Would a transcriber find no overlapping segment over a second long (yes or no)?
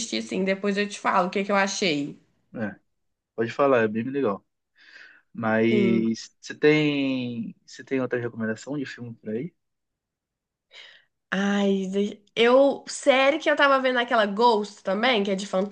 yes